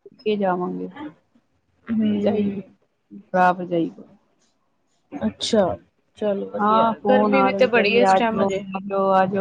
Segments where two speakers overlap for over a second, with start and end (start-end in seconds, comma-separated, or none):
6.6-8.6